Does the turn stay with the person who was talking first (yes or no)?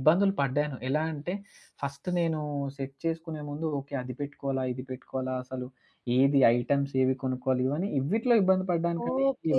no